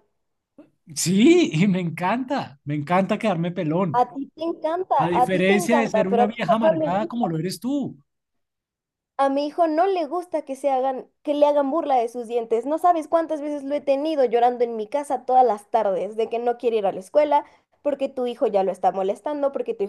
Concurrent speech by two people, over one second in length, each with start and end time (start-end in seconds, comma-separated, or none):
5.0-7.3